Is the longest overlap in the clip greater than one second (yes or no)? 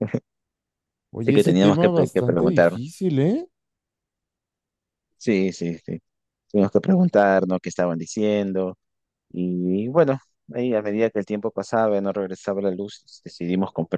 yes